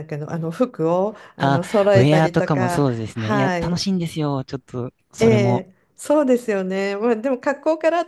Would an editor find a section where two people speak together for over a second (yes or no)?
yes